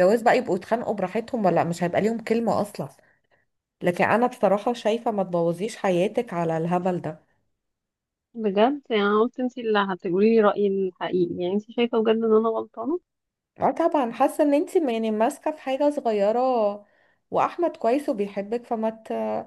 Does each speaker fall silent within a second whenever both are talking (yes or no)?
yes